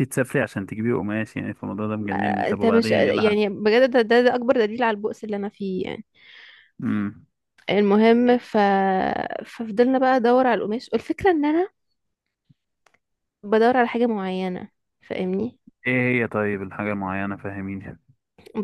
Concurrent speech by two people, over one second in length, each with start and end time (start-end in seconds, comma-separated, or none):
2.1-3.5